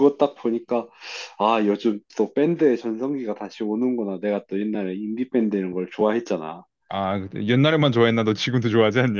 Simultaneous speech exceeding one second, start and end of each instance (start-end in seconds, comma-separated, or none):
none